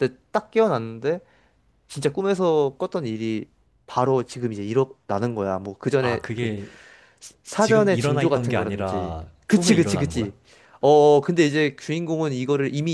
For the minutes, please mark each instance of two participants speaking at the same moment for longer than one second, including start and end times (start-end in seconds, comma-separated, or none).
7.6-10.3